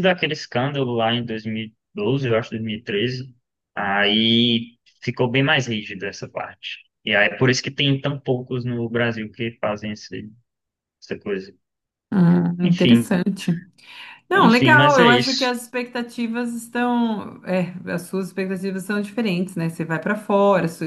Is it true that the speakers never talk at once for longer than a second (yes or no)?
no